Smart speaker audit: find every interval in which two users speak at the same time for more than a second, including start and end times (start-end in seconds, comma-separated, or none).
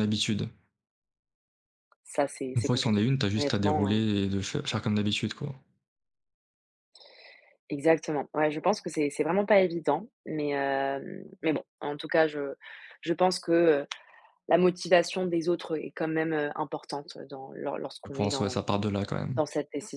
2.5-4.0